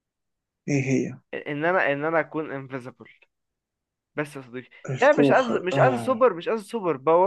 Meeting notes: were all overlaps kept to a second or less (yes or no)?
no